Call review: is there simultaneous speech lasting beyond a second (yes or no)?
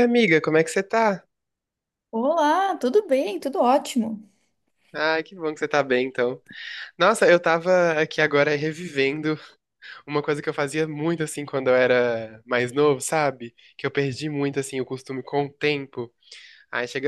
no